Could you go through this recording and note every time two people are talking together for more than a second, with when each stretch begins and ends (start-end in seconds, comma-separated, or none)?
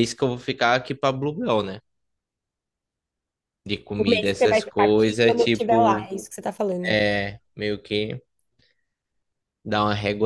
4.0-6.1